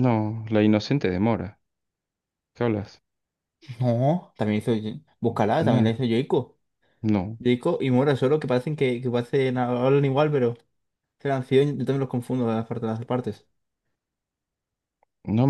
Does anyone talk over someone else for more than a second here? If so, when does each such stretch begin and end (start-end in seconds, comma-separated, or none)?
none